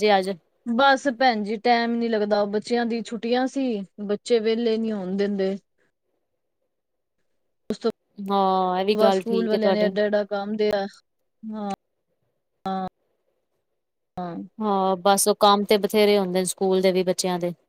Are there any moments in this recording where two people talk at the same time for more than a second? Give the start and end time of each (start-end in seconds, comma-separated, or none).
8.3-9.9